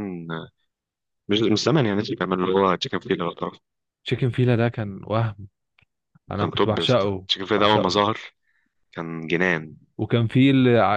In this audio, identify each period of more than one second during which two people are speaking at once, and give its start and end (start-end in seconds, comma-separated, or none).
6.4-8.0